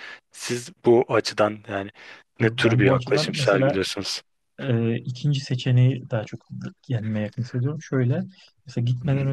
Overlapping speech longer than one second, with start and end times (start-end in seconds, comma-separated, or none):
2.4-3.8